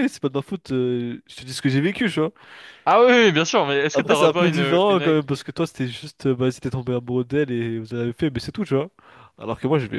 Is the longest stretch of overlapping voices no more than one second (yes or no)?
no